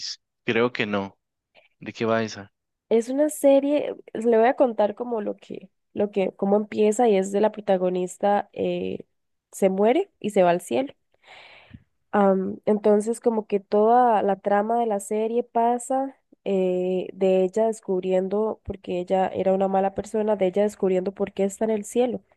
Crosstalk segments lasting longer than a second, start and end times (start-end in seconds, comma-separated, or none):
none